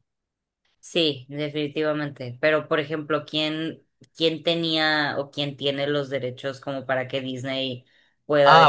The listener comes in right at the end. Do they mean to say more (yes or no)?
yes